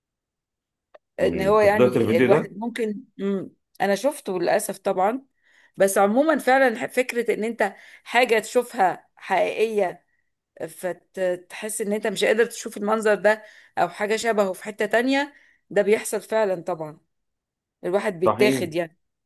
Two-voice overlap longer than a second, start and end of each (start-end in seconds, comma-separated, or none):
1.2-2.5